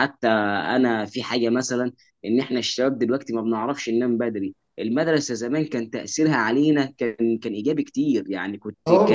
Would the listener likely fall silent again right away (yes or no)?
yes